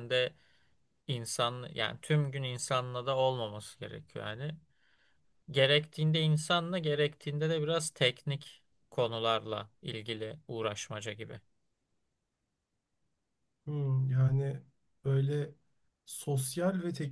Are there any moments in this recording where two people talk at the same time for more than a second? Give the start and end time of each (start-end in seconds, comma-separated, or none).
none